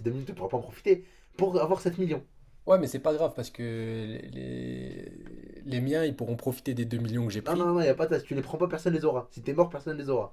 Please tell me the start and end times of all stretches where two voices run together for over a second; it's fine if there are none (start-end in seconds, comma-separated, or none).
none